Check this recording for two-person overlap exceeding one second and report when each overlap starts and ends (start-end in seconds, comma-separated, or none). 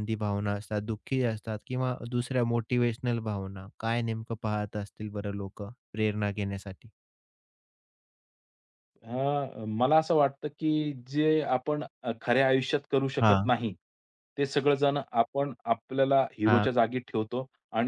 none